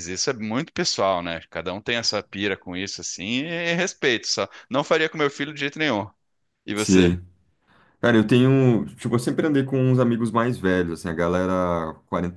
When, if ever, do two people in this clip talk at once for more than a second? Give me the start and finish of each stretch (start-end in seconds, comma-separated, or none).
none